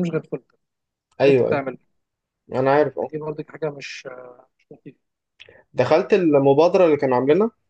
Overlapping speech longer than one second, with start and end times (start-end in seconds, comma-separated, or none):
none